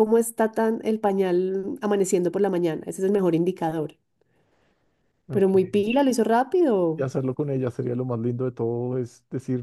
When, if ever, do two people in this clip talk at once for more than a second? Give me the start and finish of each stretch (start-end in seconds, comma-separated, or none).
none